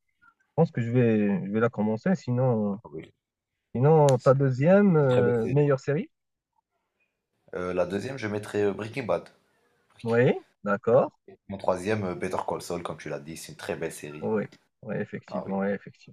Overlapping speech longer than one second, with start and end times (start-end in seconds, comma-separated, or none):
4.2-5.6